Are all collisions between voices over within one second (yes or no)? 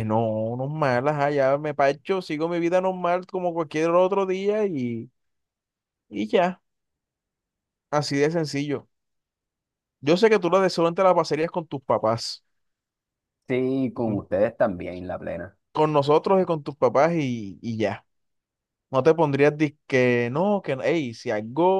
yes